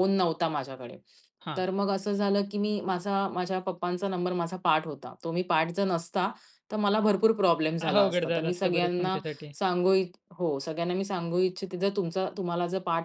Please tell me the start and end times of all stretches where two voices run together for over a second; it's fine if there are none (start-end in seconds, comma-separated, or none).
7.8-9.2